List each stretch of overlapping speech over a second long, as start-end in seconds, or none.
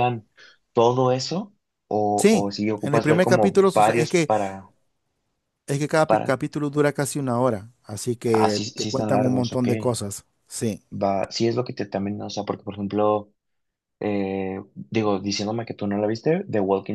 2.1-4.3, 8.3-9.7